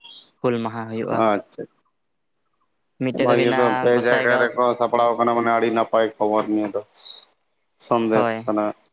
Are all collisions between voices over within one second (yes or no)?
no